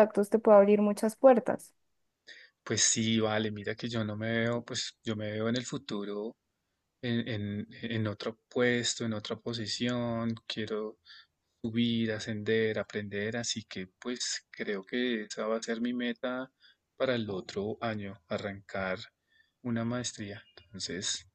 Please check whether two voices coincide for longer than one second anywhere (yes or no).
no